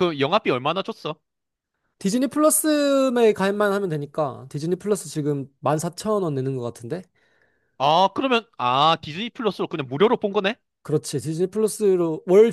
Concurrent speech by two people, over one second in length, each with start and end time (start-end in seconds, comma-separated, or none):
none